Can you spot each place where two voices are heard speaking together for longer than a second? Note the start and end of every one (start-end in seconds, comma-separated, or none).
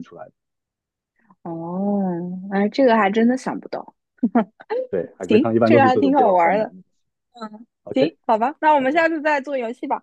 5.3-6.7